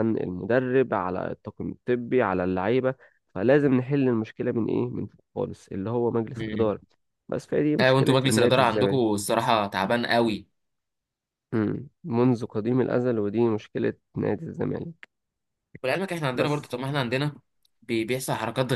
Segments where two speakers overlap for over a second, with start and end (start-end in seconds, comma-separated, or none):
7.8-9.0